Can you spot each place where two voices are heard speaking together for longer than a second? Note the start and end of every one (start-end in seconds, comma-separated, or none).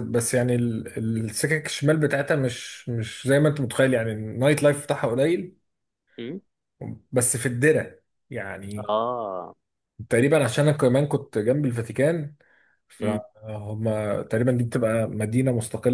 none